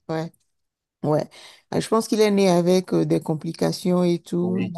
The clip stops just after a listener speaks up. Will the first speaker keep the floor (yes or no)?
yes